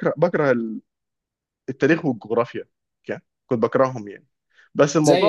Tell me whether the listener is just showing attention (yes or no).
yes